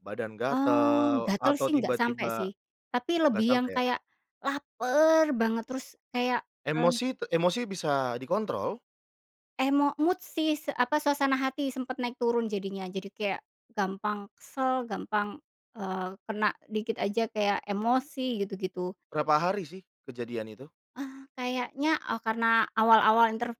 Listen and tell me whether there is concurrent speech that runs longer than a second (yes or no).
yes